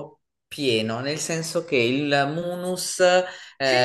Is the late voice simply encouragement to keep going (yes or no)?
no